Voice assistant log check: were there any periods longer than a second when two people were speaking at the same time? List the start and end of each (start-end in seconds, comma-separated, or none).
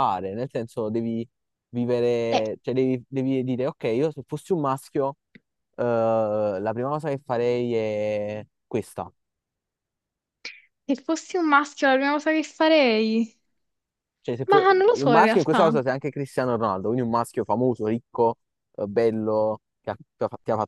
14.5-15.8